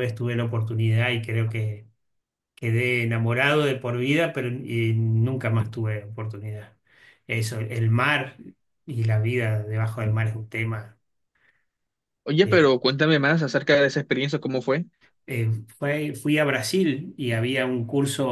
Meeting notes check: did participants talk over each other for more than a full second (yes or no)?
no